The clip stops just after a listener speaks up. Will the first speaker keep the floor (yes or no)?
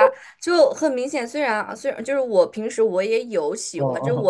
yes